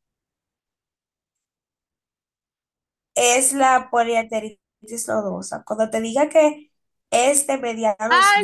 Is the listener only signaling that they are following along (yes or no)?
no